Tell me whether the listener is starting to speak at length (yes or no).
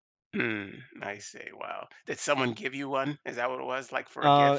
yes